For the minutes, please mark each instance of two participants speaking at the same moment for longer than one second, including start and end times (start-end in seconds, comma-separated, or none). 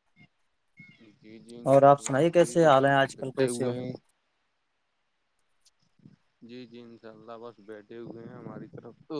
1.7-3.7